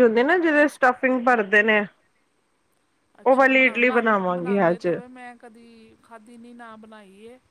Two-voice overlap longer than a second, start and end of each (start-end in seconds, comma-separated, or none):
3.3-4.9